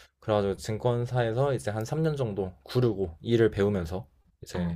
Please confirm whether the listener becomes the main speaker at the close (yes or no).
no